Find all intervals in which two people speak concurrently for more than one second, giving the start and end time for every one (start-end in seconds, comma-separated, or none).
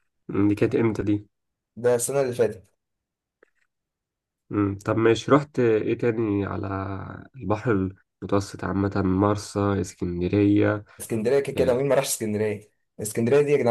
none